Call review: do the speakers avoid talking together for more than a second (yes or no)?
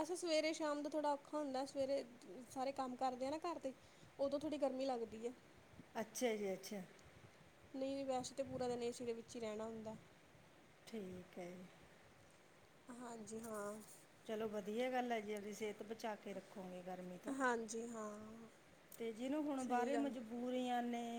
yes